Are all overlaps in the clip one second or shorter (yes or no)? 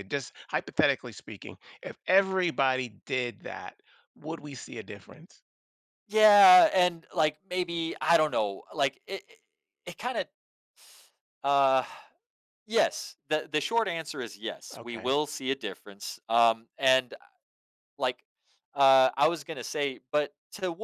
yes